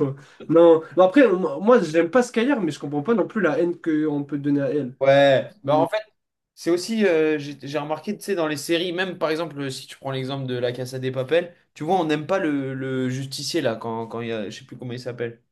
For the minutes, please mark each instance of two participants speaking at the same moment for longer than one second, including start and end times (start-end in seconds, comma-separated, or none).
none